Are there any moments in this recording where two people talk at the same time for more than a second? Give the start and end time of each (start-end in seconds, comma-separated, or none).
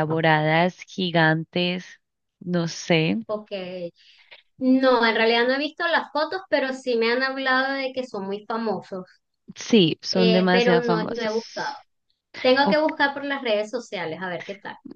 10.1-11.3